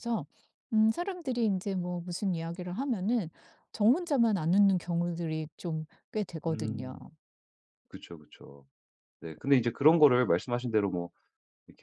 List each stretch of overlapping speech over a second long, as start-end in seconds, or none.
none